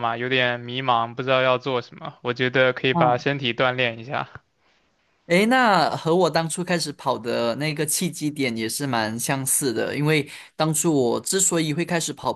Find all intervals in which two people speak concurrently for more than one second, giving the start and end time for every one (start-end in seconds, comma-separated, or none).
none